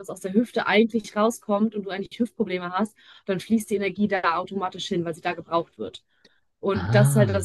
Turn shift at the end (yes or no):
no